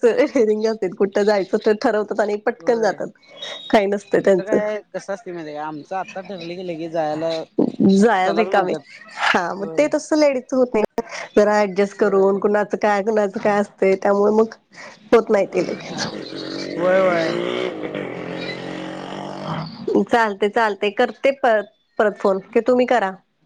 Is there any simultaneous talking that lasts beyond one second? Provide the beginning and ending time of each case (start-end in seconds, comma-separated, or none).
none